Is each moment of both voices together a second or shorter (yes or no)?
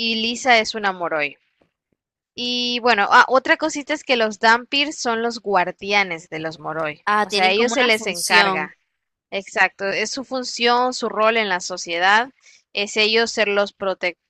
no